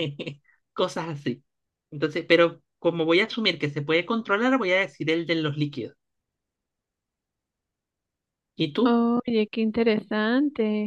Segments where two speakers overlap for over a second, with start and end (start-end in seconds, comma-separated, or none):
none